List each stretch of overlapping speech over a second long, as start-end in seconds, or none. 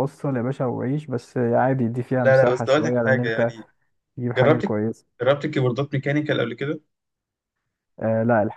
2.2-3.5